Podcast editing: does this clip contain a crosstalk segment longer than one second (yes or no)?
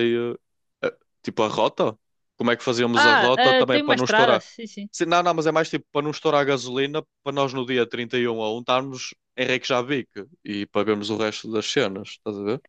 yes